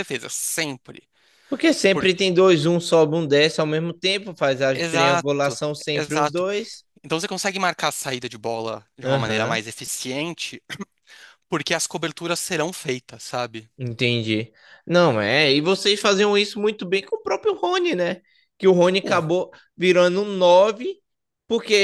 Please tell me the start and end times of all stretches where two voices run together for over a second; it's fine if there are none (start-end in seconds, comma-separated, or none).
4.7-6.4